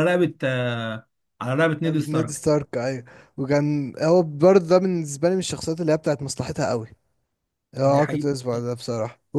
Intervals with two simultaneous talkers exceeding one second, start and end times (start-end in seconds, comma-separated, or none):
none